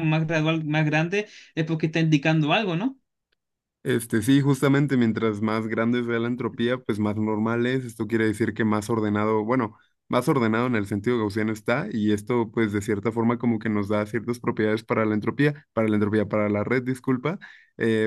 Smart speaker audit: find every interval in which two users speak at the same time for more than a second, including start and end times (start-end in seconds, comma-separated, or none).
none